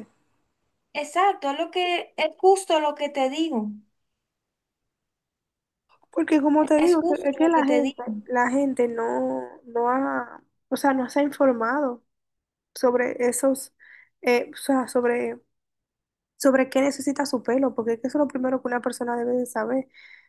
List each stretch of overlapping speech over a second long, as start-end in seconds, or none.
6.8-8.0